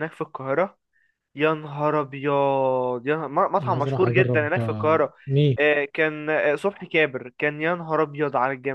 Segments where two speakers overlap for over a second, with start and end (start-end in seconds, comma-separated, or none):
3.6-5.1